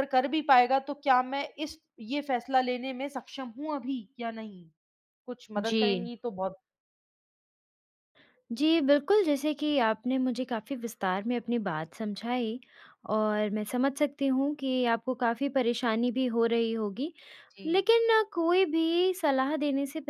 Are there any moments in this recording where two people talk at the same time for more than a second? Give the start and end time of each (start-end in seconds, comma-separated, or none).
none